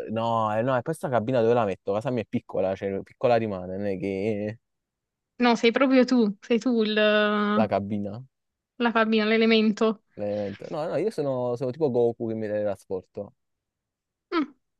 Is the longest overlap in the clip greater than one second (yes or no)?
no